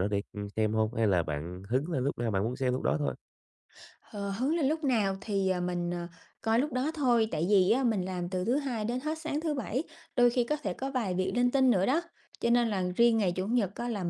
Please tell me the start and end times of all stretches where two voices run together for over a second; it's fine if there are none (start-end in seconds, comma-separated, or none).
none